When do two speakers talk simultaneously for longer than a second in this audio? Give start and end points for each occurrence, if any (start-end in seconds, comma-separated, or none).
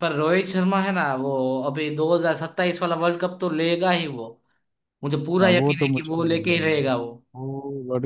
5.4-6.9